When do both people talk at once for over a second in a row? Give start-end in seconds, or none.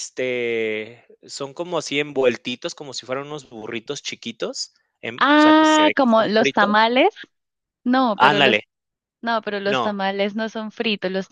5.2-6.9